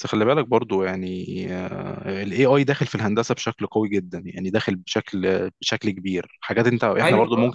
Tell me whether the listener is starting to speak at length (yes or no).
no